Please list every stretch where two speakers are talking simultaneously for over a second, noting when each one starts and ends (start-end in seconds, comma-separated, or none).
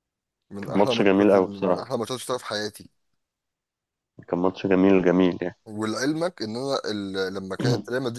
0.6-1.9